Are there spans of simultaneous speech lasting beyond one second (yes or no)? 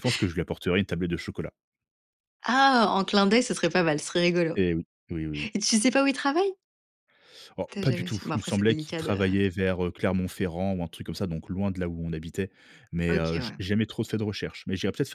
yes